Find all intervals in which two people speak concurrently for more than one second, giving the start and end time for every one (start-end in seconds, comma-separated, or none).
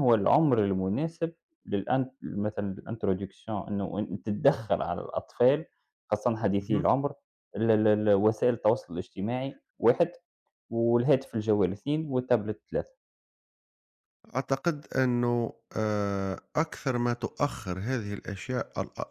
none